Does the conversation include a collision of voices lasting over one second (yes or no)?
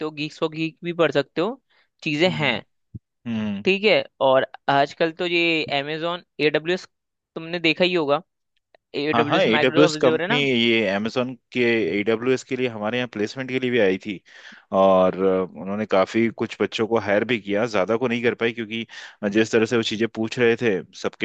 yes